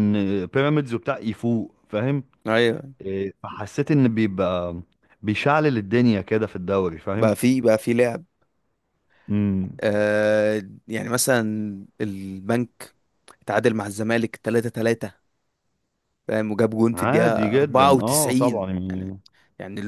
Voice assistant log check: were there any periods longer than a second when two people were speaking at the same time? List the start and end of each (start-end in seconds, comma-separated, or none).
16.9-19.1